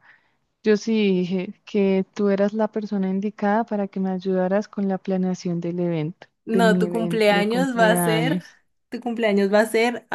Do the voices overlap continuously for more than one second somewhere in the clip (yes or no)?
yes